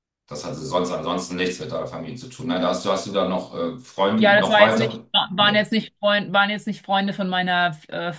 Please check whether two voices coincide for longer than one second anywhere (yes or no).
yes